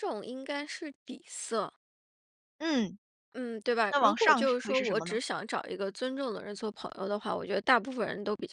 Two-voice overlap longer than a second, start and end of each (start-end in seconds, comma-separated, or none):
3.9-5.2